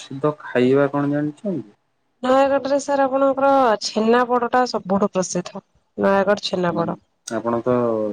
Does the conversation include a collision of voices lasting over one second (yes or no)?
no